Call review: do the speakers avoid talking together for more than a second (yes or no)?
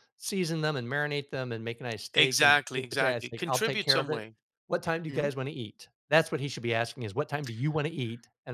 no